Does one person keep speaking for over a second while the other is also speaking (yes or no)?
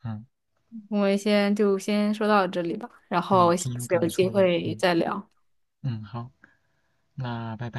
yes